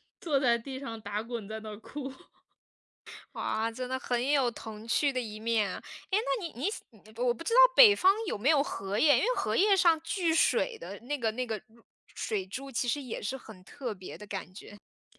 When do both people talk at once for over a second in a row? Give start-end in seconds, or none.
none